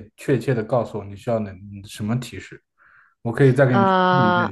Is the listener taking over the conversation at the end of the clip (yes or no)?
no